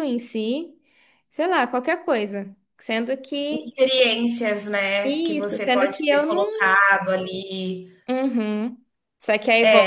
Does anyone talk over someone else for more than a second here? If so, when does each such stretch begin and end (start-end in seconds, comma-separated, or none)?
5.0-6.6